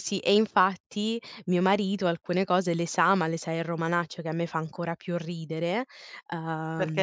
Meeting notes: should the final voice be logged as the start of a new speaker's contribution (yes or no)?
yes